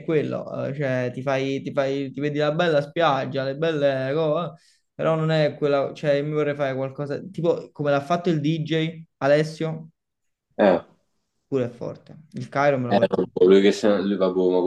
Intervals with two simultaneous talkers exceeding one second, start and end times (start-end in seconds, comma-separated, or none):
none